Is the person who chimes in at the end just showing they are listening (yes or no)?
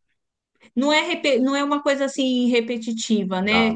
yes